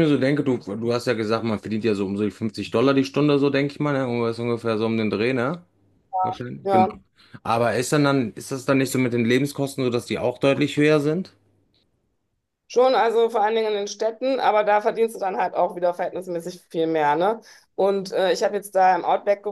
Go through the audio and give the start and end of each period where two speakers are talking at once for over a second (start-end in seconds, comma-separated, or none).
none